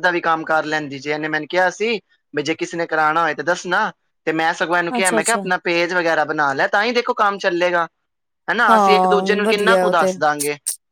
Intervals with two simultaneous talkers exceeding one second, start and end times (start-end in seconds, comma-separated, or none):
8.7-10.1